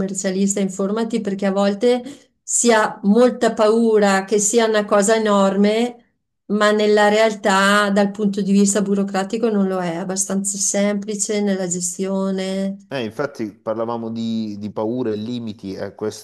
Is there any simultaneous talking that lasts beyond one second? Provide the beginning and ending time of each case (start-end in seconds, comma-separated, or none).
none